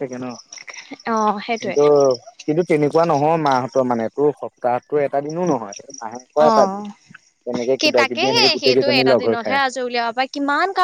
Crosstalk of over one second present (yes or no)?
yes